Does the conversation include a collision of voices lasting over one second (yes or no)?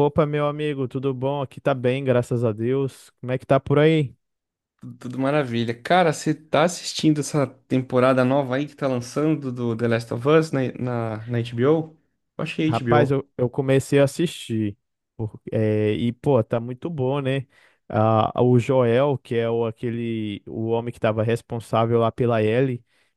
no